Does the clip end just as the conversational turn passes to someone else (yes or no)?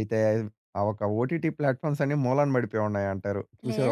yes